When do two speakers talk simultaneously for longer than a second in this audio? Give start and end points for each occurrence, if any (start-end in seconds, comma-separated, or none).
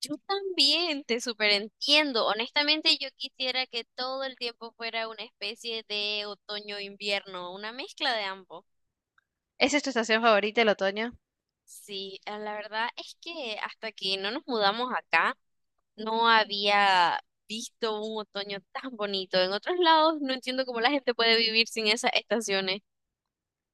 none